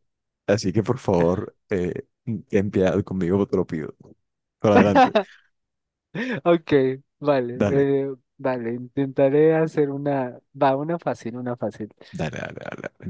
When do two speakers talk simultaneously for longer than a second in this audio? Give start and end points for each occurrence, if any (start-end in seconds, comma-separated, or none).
none